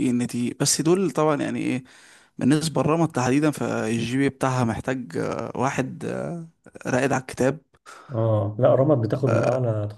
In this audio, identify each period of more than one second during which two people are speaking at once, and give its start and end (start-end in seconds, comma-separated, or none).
none